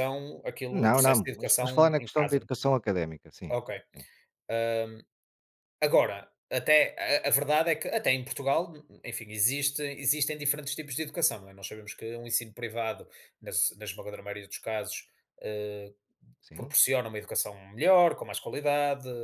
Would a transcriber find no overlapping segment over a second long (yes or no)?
no